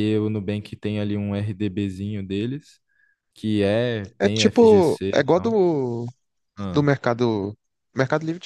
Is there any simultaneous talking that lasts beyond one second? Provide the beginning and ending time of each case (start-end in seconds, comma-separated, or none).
4.2-5.6